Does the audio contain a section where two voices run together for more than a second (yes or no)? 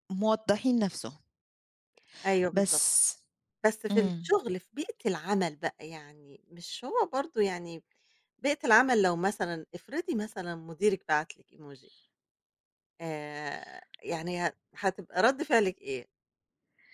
no